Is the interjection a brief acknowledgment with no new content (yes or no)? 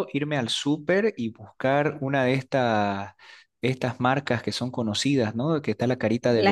yes